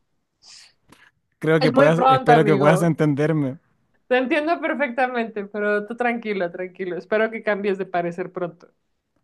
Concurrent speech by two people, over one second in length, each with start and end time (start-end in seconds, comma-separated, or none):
1.6-3.0